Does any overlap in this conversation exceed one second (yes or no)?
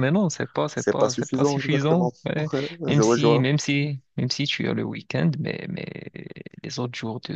yes